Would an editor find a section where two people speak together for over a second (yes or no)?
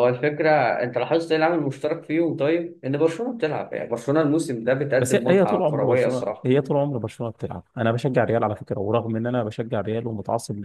yes